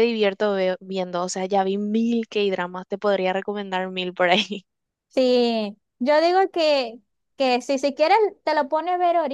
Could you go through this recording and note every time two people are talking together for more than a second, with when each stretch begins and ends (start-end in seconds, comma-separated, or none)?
none